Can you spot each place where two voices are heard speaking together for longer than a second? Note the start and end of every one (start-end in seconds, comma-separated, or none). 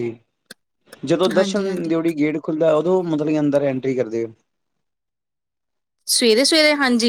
none